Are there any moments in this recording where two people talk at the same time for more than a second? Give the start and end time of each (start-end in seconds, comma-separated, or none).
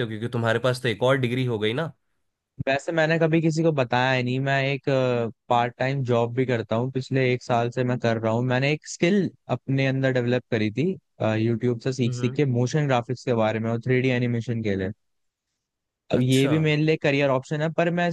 none